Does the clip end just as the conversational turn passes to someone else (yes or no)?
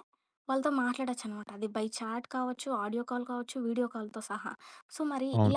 no